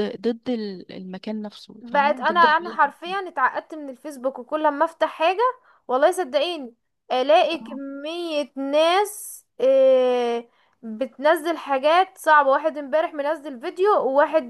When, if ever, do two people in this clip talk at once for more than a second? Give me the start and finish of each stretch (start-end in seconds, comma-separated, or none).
1.8-3.2